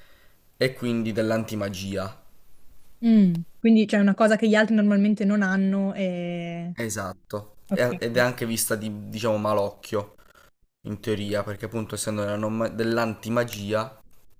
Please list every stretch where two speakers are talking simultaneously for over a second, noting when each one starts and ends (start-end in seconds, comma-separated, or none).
none